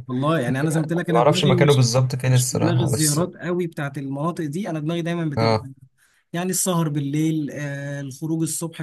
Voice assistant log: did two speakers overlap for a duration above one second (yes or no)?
yes